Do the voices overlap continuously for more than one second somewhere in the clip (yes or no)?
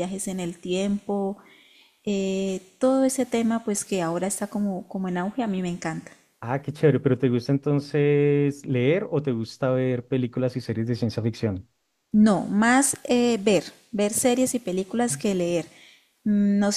no